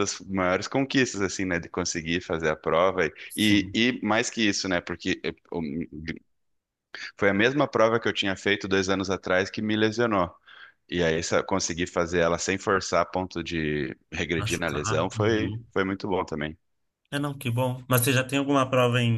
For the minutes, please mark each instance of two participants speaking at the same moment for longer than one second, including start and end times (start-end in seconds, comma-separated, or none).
14.3-15.7